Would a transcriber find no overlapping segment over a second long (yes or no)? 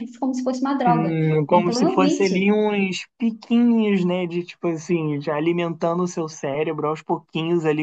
no